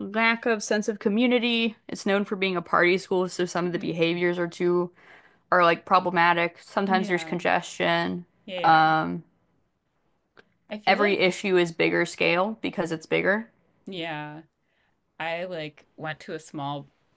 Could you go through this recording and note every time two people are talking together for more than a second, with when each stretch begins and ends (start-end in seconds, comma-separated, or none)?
none